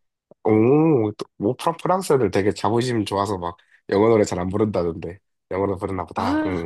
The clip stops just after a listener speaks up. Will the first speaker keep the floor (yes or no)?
no